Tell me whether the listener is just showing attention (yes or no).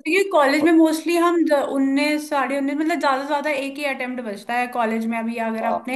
yes